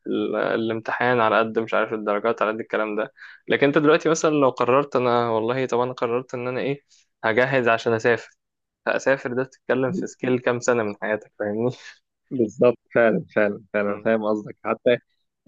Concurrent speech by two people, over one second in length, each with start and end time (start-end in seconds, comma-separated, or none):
none